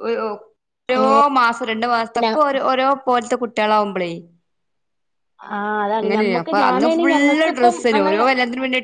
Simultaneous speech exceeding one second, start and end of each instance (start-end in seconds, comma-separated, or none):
6.0-8.2